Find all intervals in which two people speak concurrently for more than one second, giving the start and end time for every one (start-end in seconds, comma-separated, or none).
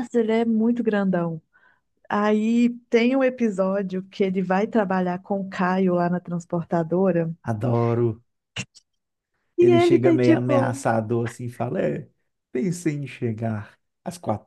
9.6-10.8